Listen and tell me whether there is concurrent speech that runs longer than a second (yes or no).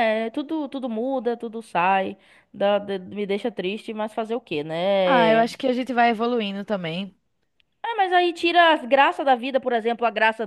no